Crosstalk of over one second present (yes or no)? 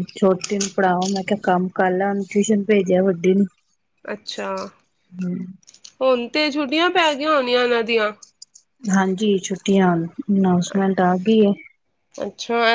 no